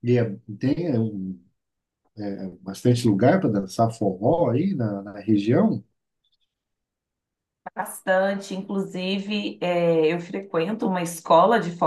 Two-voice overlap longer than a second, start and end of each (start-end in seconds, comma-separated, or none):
none